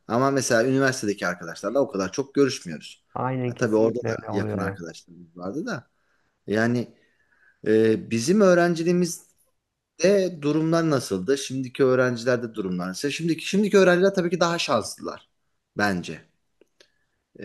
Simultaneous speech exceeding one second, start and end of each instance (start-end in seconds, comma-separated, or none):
3.5-4.8